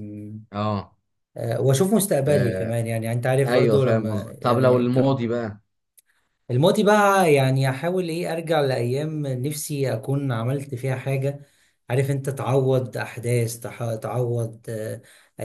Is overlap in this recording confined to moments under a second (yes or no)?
no